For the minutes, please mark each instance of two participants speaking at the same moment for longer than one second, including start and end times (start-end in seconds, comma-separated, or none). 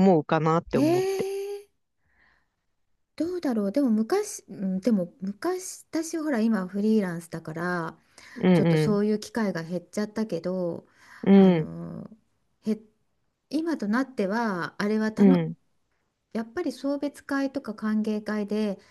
none